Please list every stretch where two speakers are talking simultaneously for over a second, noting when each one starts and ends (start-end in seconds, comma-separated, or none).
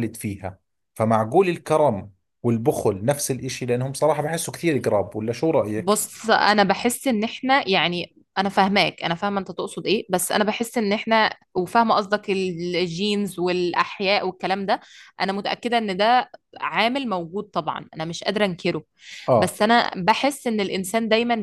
none